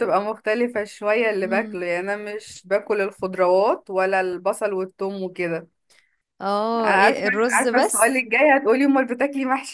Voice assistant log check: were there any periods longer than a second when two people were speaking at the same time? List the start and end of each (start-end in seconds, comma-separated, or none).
6.8-8.2